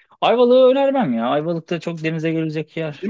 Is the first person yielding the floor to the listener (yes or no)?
yes